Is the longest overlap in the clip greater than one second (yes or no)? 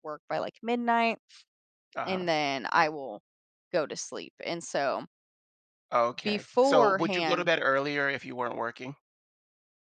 yes